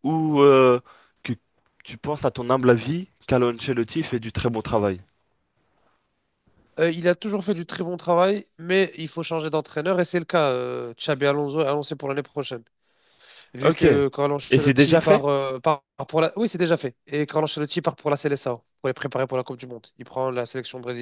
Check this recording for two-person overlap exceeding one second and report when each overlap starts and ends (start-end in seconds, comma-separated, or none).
13.6-15.3